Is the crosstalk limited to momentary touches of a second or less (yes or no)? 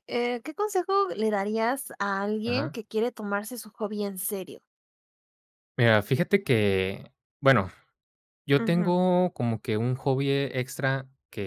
yes